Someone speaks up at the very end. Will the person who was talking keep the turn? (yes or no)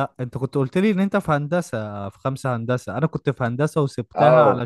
yes